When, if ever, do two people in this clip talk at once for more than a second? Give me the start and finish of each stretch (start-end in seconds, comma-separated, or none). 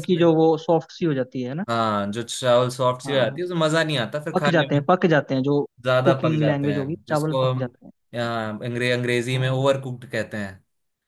6.0-7.7